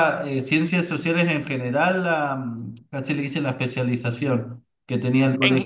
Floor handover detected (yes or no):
no